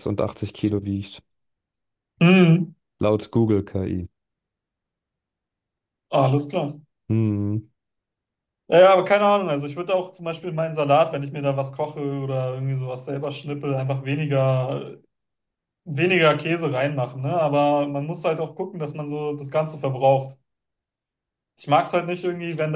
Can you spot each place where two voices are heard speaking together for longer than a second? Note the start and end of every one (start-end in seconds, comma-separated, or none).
none